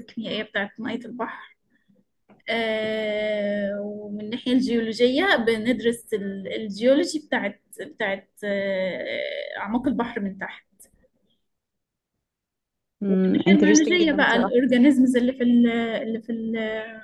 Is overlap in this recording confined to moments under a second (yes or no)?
no